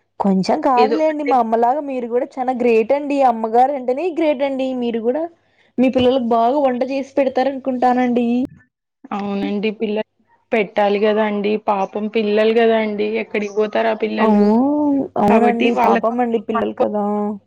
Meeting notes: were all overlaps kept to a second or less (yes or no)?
no